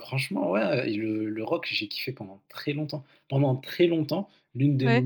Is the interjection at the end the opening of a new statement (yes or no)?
no